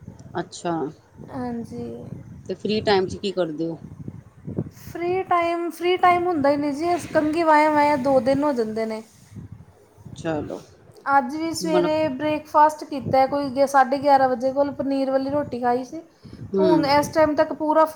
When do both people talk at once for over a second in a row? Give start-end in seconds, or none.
none